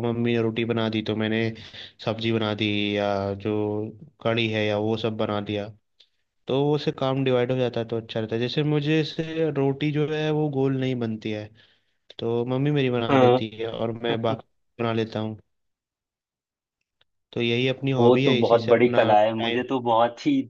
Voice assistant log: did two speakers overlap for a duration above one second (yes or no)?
yes